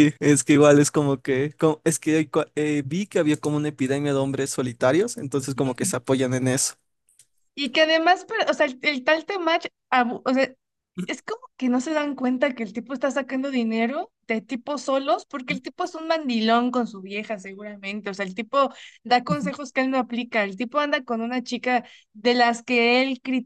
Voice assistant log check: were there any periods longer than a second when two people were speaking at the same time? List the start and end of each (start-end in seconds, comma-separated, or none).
none